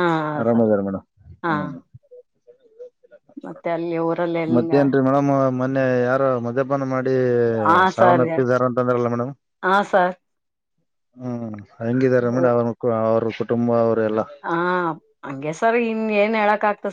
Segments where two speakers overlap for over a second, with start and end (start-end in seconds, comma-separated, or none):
none